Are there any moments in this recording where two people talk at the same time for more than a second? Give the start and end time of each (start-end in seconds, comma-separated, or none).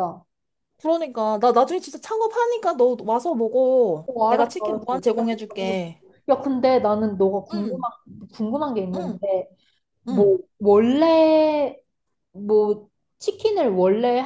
4.1-5.9